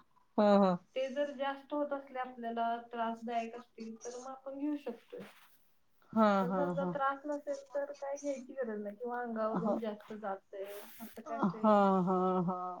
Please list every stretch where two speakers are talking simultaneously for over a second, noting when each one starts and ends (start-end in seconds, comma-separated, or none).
none